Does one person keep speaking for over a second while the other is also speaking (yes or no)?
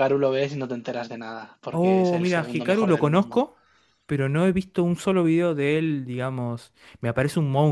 yes